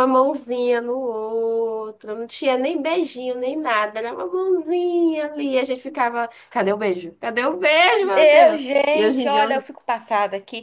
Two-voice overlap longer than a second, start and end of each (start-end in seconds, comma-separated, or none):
8.0-9.6